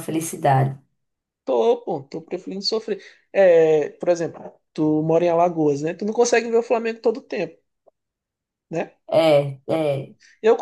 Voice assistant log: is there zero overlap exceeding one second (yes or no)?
yes